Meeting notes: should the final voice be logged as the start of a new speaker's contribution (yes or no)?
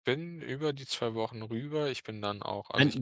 yes